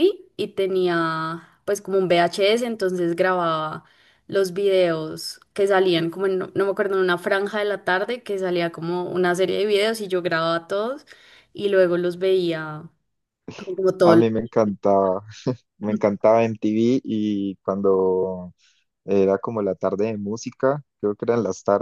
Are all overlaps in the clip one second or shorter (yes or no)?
yes